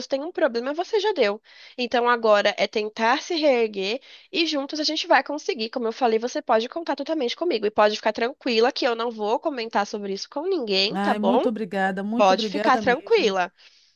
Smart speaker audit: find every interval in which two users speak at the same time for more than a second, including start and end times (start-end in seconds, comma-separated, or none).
12.2-13.4